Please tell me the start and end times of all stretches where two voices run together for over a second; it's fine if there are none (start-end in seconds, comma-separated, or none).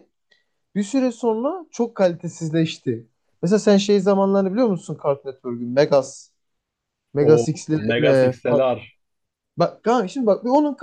7.2-8.6